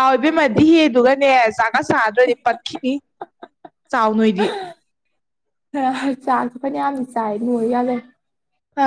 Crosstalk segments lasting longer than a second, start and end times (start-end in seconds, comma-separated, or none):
none